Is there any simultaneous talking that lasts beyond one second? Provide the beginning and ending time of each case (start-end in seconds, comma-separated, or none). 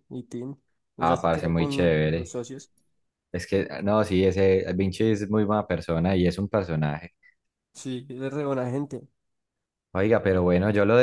1.0-2.4